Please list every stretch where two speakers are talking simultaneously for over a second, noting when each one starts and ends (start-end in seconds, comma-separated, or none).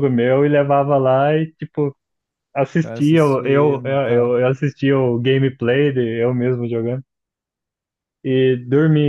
2.8-4.3